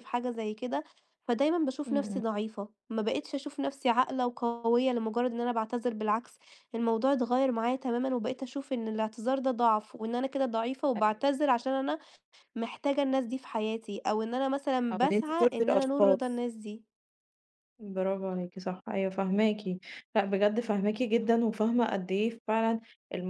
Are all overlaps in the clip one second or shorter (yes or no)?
no